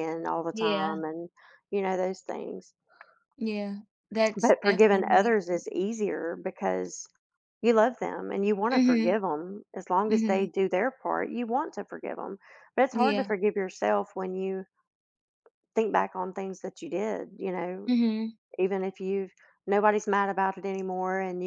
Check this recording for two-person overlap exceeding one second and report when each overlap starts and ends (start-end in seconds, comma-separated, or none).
4.4-5.6